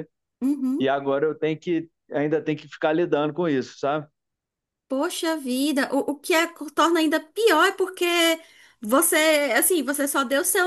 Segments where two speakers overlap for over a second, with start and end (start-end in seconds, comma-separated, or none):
none